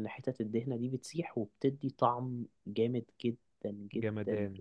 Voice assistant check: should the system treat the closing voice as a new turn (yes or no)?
yes